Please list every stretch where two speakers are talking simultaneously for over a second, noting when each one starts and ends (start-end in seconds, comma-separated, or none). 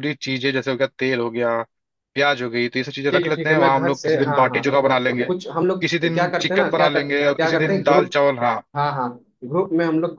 3.1-4.7, 5.8-8.2